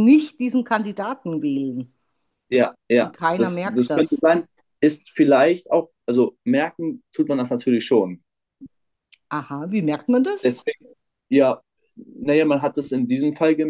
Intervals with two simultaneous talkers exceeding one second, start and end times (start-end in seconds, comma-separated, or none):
3.0-4.2